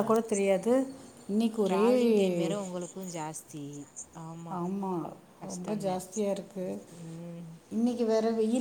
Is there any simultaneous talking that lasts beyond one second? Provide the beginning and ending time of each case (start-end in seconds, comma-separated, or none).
none